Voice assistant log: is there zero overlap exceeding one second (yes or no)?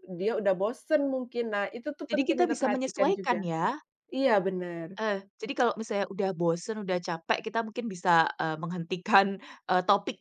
no